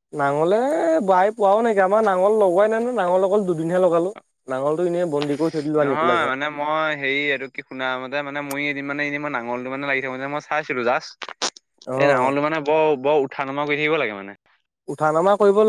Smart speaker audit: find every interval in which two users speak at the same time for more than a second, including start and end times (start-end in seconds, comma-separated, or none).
none